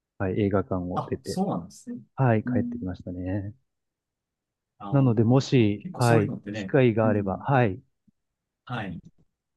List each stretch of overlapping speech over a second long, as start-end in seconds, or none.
4.9-7.5